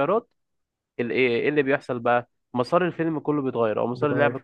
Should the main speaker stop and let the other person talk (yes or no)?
no